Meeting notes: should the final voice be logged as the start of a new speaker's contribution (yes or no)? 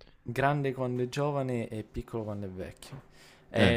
no